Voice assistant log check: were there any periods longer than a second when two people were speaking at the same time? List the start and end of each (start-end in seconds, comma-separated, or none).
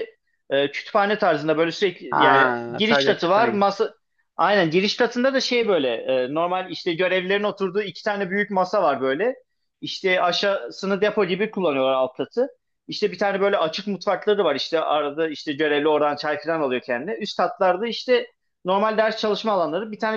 2.1-3.6